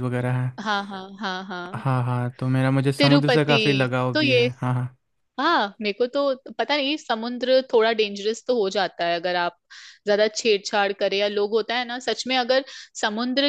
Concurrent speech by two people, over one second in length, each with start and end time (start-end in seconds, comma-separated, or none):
3.0-4.5